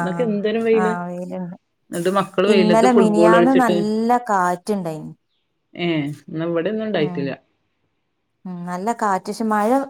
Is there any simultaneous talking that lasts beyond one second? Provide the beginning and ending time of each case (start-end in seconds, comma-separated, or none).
none